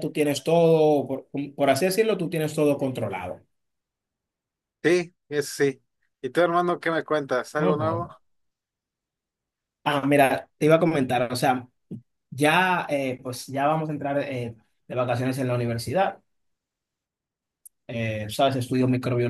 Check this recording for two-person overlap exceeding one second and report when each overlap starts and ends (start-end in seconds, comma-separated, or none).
none